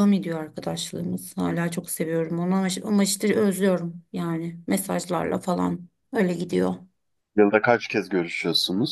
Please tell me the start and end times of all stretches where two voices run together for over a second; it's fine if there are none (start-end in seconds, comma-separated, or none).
none